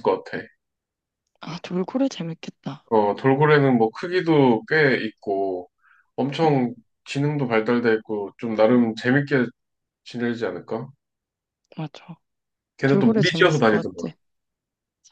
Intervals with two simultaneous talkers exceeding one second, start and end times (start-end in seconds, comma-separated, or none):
12.9-14.1